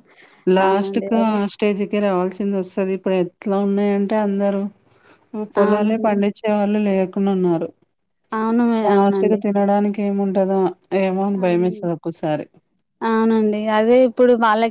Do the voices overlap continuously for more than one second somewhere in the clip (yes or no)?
no